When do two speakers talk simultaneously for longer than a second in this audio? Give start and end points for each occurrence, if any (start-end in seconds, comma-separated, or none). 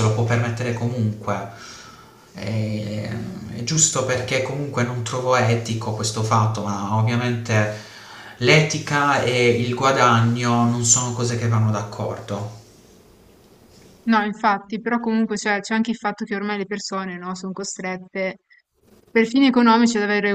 none